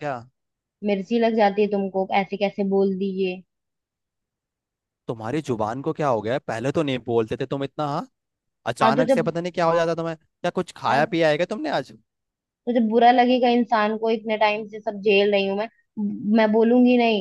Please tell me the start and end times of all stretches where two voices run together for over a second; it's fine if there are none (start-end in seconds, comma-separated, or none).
none